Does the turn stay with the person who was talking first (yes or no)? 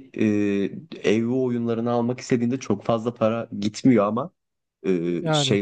yes